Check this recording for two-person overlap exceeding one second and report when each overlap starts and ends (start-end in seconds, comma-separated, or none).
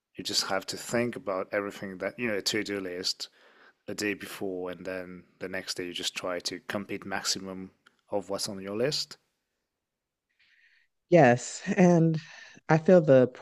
none